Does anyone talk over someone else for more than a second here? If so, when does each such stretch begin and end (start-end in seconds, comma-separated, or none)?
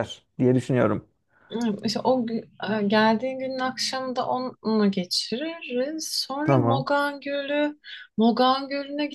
none